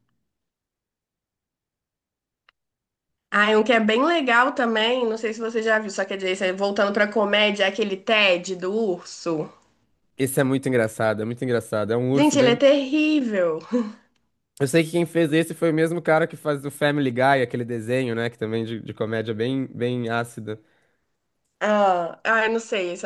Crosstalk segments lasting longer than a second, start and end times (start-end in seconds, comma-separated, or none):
none